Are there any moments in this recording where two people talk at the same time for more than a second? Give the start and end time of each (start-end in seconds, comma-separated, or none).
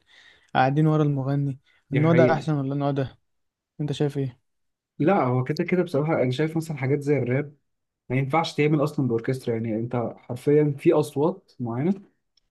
none